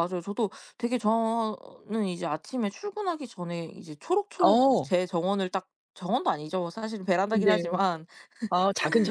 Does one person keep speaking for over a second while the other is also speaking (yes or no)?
no